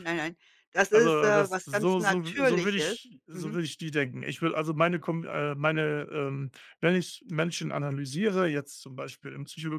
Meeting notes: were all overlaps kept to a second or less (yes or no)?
no